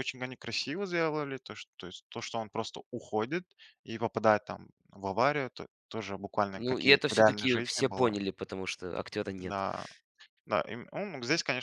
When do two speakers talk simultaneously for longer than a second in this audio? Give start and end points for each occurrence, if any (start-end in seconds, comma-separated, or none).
6.5-8.1